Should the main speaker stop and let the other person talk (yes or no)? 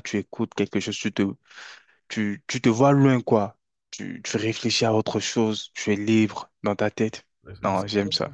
yes